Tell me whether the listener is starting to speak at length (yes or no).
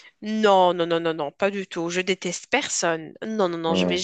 no